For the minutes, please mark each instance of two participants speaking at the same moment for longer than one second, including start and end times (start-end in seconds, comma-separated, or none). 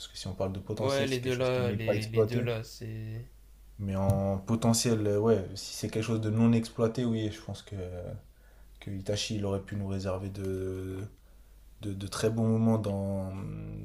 0.8-2.5